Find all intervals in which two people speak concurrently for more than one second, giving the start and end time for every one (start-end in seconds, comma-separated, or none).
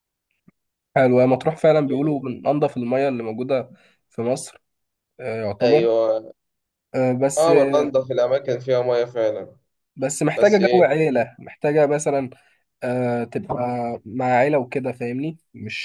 none